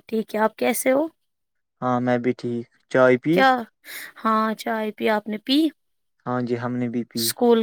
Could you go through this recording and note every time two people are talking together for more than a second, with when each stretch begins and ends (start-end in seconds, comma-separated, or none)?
none